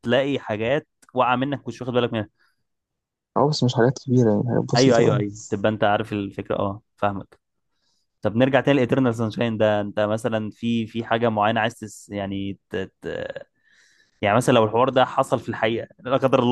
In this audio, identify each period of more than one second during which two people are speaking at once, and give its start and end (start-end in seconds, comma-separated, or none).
none